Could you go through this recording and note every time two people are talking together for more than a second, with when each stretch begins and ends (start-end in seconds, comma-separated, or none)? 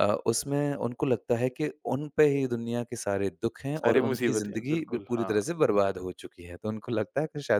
3.8-5.5